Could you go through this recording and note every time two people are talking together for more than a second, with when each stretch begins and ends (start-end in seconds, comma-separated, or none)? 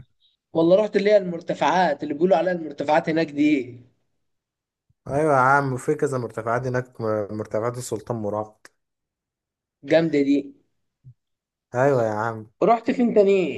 none